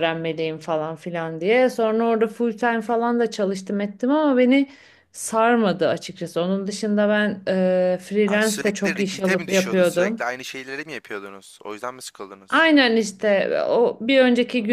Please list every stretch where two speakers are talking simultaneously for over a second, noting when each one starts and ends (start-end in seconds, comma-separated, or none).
8.2-10.3